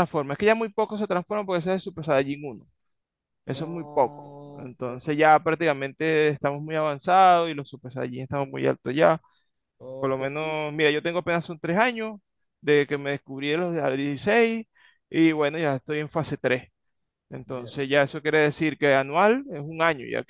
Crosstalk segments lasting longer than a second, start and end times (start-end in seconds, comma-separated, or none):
3.5-4.9